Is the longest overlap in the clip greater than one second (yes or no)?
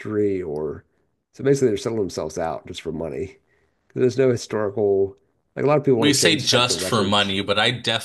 yes